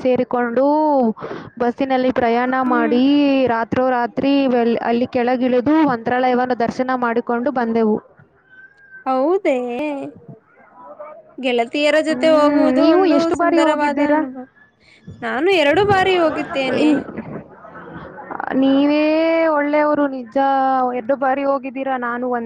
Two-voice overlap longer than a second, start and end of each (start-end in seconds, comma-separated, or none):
12.1-14.2